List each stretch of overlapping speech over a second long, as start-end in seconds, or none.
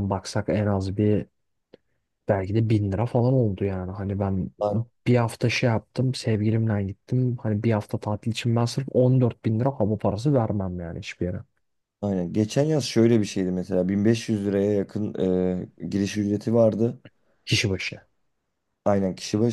none